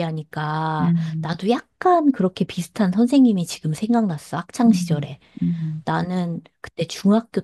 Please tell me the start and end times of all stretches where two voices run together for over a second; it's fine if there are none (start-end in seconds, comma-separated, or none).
none